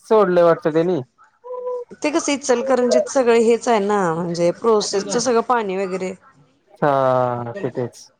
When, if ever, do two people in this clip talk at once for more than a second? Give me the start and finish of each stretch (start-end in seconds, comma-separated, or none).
none